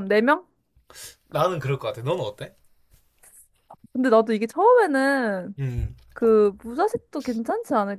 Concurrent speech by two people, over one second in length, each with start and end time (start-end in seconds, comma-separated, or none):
none